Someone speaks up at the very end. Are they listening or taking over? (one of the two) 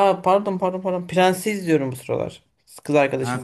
taking over